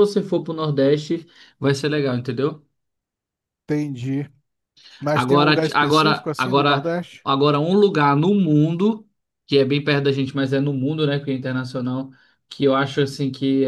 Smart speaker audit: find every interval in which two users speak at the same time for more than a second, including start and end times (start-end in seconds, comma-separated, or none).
5.1-7.3